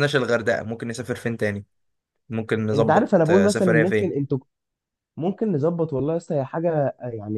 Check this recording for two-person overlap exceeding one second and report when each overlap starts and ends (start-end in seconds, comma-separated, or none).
2.7-4.1